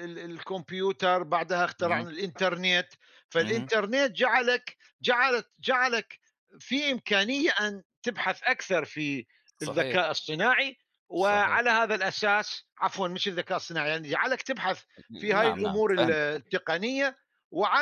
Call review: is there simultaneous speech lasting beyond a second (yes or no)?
yes